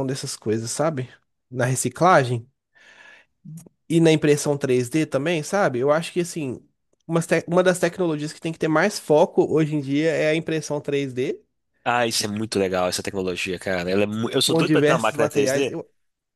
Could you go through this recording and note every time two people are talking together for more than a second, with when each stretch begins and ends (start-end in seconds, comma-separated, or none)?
14.4-15.8